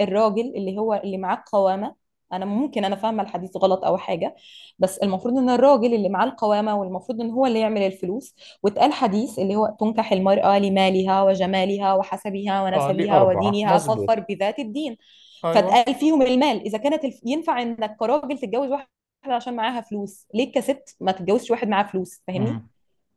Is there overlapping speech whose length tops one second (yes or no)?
yes